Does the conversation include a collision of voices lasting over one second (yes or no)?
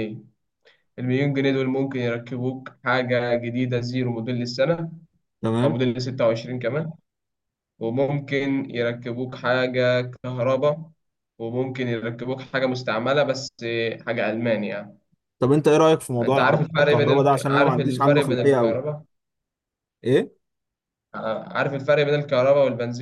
yes